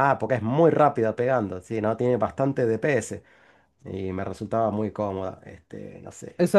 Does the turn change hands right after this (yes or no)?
yes